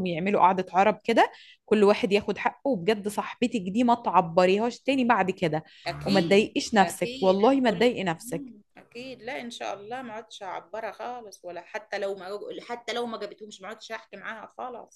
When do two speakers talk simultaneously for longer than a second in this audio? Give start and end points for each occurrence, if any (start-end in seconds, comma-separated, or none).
6.0-8.5